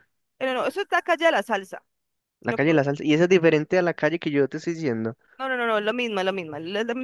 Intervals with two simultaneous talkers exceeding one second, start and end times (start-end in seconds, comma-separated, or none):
none